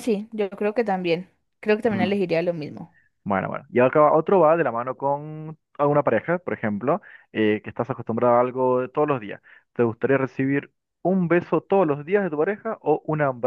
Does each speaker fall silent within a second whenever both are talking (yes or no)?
yes